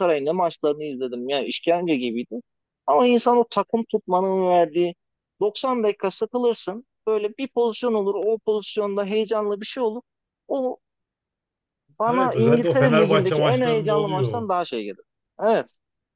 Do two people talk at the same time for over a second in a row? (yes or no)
yes